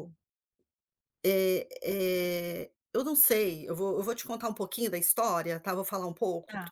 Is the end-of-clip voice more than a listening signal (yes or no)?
no